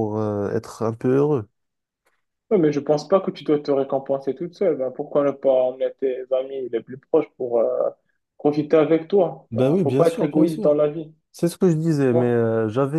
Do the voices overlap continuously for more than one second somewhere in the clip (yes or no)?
yes